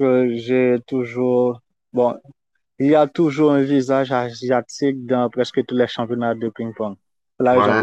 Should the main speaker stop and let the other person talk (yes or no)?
yes